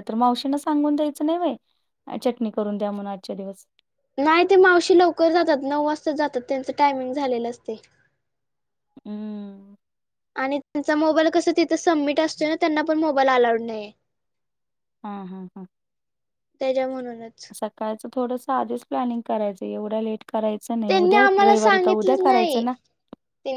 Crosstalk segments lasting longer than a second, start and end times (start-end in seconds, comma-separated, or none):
20.9-22.6